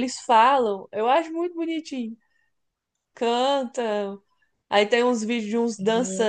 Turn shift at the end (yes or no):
no